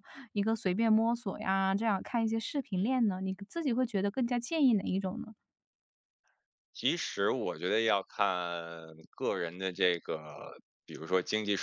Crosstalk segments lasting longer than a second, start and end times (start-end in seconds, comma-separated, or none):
none